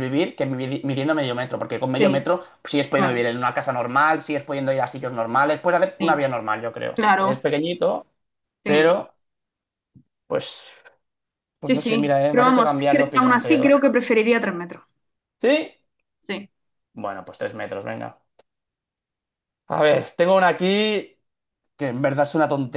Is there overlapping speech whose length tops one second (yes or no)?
yes